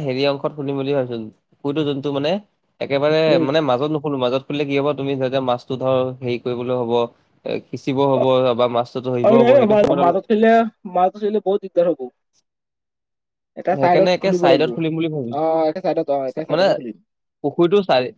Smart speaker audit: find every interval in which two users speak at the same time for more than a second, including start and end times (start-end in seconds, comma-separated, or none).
13.8-15.4